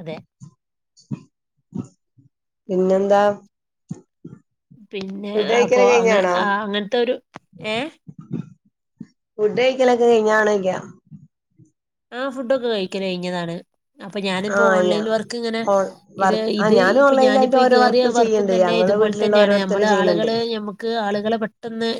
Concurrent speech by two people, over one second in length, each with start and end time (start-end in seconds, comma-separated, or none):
16.2-20.3